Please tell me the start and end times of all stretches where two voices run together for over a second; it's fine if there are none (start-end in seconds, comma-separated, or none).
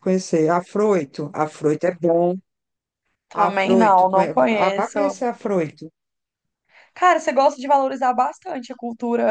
3.3-5.0